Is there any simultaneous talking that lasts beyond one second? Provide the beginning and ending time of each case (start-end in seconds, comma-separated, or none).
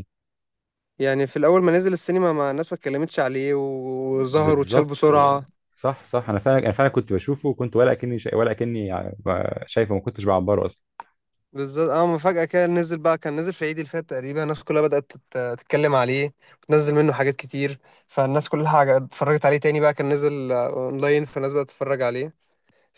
4.1-5.4